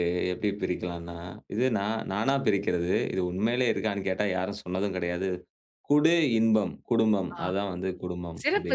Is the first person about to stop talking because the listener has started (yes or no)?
yes